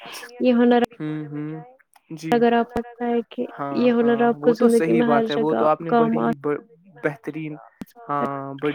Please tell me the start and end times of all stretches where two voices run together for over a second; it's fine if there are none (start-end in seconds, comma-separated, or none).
3.8-6.3